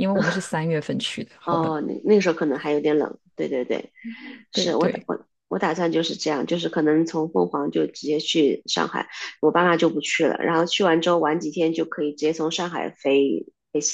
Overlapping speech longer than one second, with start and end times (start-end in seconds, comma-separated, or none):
none